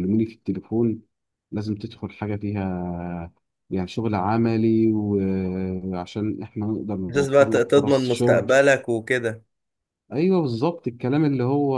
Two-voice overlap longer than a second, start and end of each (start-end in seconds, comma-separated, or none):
7.1-8.5